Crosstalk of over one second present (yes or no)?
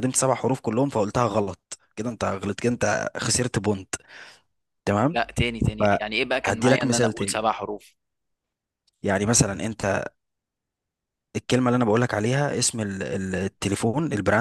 yes